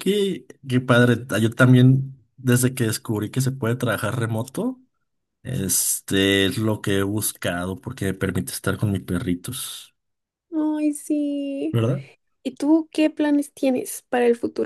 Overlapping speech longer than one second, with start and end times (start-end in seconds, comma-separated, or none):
none